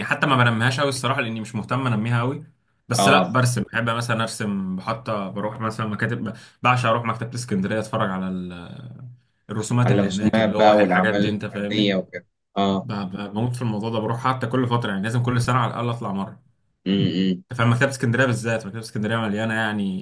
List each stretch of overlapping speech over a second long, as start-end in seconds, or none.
9.8-12.0